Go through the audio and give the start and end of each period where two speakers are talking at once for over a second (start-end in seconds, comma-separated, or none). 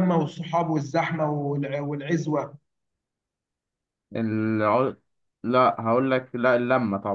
none